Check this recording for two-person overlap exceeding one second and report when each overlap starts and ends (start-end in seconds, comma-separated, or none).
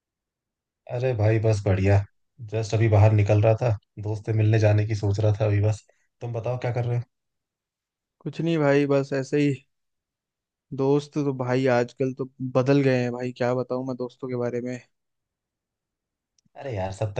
none